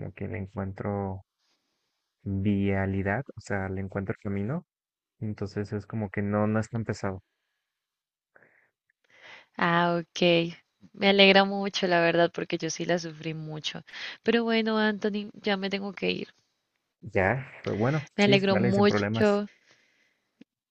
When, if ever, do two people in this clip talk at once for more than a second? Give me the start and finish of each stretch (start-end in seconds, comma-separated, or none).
18.1-19.4